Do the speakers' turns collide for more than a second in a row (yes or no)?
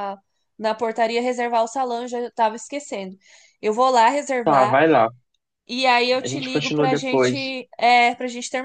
yes